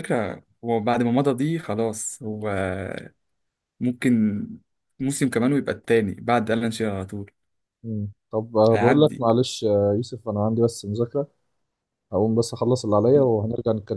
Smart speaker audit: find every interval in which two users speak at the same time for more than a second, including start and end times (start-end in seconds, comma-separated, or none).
none